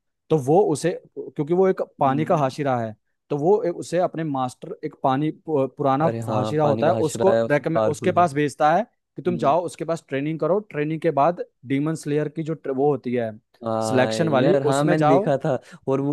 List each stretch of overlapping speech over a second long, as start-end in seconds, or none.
6.1-8.3, 13.9-15.3